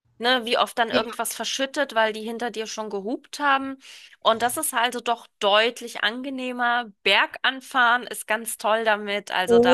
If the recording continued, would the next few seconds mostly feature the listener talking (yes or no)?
yes